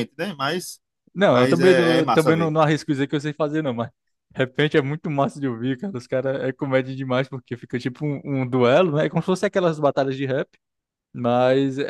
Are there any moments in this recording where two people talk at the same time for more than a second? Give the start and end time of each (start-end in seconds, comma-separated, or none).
1.3-2.5